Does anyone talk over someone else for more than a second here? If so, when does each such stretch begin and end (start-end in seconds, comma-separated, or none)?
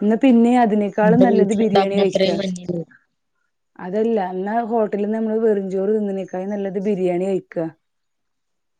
1.0-2.3